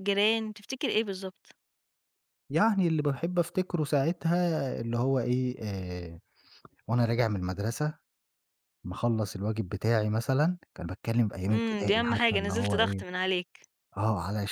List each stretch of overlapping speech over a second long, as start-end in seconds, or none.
11.5-13.0